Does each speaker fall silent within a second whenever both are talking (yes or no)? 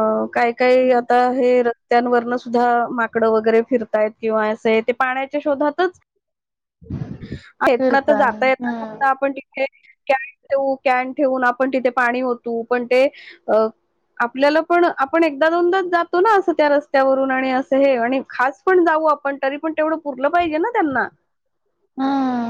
no